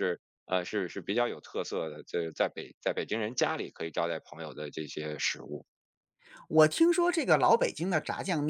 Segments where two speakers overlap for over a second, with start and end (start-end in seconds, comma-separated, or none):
none